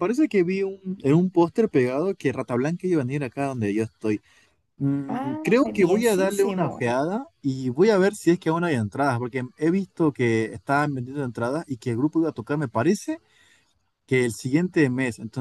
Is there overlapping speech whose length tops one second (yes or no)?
yes